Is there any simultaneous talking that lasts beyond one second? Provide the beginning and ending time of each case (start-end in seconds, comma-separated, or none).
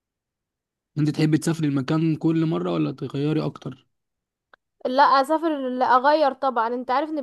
none